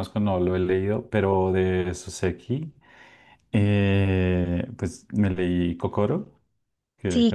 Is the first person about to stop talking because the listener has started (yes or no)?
yes